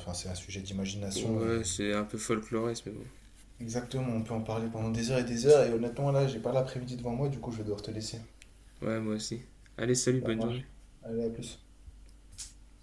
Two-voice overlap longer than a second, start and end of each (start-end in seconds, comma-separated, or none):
none